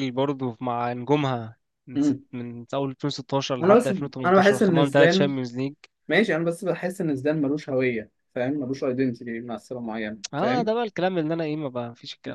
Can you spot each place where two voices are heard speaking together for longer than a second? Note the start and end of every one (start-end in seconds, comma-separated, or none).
3.6-5.3